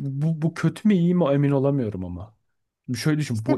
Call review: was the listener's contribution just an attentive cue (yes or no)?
yes